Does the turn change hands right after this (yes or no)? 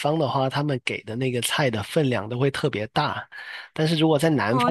no